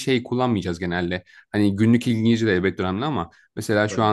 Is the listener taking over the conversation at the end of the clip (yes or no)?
no